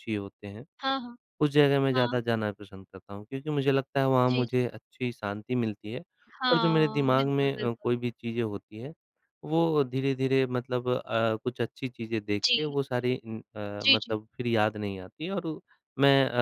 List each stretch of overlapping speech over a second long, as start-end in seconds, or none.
6.5-7.9